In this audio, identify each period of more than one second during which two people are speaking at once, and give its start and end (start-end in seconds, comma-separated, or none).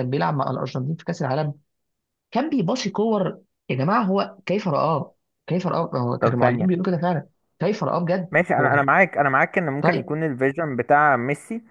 none